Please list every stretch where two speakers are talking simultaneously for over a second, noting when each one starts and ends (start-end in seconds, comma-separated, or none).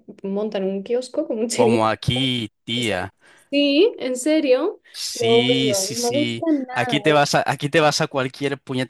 4.9-7.0